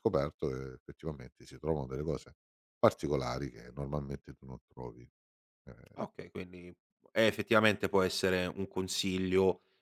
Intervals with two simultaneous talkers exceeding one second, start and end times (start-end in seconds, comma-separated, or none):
none